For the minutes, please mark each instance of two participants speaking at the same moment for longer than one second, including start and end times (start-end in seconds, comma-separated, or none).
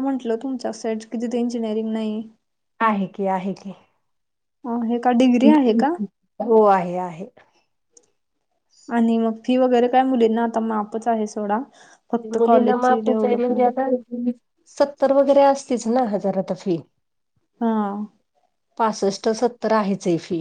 12.3-13.8